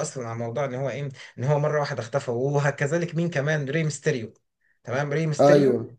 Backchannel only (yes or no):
yes